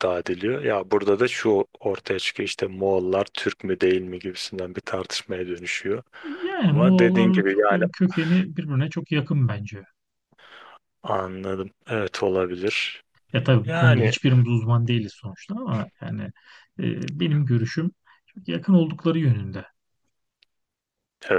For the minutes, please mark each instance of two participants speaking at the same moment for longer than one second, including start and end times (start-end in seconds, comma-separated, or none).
6.6-7.8